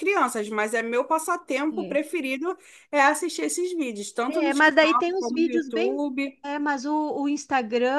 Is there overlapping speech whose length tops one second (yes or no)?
yes